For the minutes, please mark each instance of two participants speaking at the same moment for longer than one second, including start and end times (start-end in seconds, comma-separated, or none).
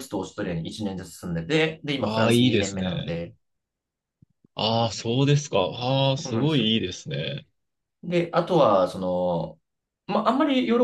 2.0-3.2